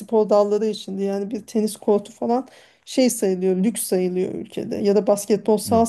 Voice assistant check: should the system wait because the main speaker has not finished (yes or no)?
yes